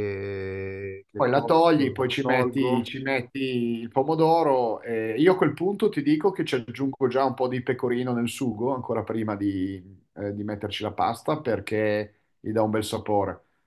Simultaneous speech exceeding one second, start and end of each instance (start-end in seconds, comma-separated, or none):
1.2-2.9